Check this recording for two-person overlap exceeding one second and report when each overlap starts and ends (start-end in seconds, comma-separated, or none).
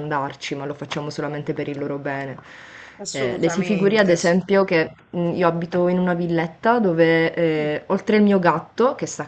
3.1-4.4